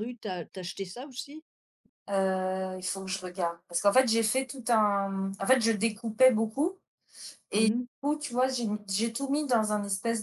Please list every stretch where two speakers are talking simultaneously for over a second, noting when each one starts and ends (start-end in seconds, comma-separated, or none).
none